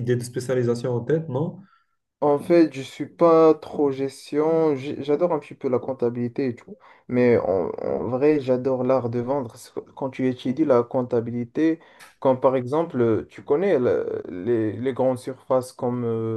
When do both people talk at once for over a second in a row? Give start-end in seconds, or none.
none